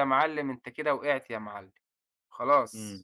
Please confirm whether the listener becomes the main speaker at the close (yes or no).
yes